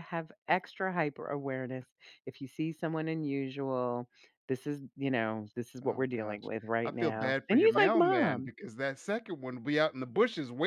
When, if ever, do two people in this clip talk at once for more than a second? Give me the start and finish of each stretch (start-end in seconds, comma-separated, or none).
5.8-8.5